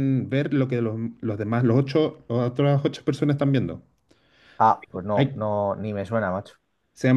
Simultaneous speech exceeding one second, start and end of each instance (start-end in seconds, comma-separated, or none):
none